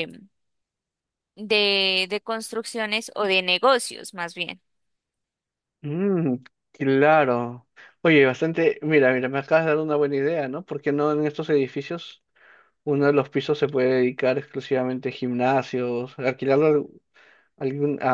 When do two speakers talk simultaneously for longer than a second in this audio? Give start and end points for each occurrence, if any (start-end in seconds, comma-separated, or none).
none